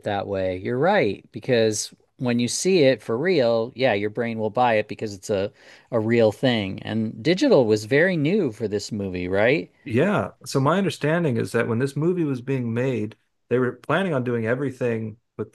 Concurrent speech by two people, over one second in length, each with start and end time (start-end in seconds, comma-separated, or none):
none